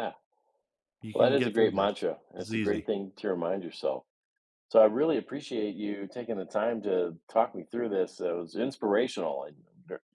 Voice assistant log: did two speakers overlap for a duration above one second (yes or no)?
yes